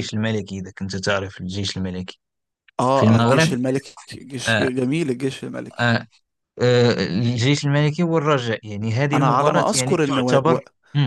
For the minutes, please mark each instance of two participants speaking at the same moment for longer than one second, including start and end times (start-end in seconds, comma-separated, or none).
9.1-10.6